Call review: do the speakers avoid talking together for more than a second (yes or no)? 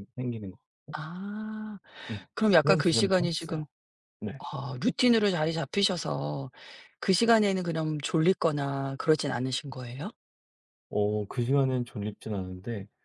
no